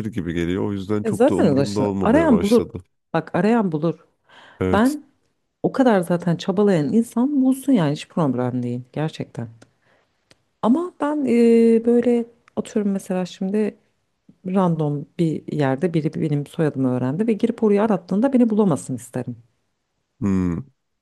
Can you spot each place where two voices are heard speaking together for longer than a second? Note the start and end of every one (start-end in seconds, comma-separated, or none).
1.0-2.7